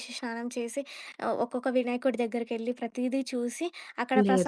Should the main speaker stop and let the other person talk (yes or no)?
no